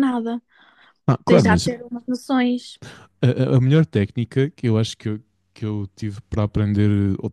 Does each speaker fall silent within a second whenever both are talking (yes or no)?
yes